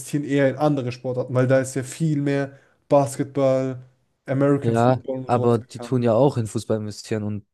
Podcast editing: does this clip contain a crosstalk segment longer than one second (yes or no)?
yes